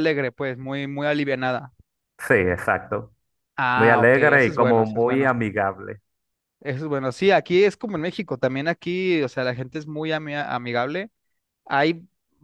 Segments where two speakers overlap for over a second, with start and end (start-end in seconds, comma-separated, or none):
3.7-5.3